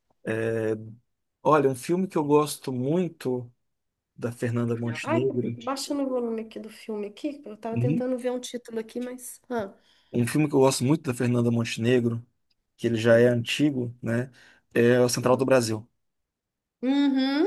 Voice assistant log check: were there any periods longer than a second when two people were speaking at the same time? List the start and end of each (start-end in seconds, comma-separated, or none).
none